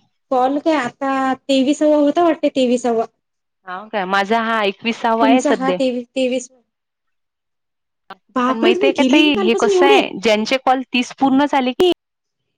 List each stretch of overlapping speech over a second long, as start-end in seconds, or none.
8.3-10.0